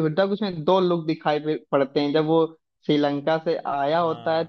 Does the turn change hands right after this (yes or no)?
no